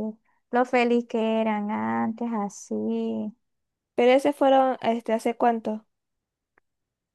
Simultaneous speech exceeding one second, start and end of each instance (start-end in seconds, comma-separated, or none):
none